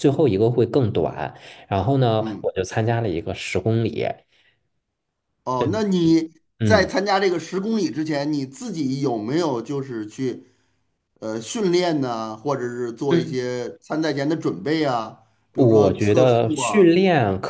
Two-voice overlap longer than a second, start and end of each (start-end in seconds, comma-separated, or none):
15.5-16.9